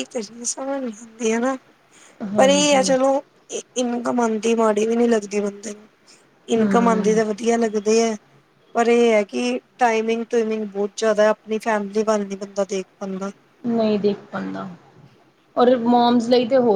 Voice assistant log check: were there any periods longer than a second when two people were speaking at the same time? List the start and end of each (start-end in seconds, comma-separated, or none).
none